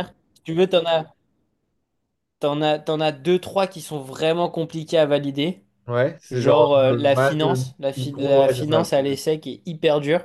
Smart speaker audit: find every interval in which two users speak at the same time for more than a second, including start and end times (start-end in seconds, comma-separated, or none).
6.3-8.9